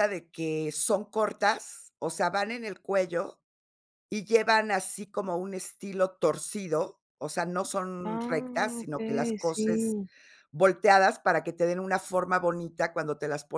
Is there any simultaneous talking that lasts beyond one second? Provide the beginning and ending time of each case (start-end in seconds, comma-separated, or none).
8.0-10.0